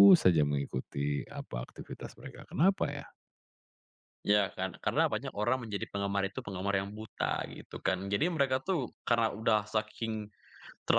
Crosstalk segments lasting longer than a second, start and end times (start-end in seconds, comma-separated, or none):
none